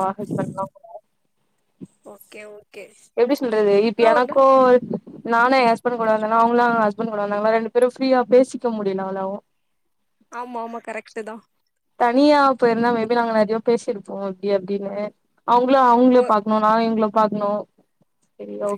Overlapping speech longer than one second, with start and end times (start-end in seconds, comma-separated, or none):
none